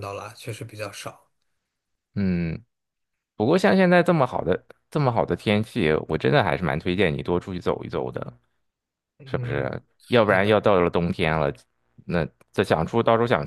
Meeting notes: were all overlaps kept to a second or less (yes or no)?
no